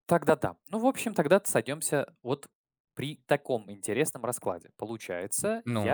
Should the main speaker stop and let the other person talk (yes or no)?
no